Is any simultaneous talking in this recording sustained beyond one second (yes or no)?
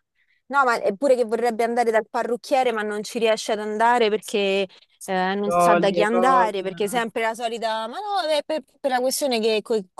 yes